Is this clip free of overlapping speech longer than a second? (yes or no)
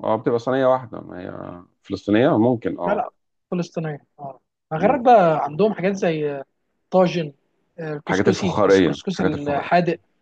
no